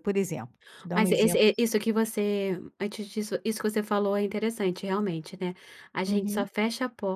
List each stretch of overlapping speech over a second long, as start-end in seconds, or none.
none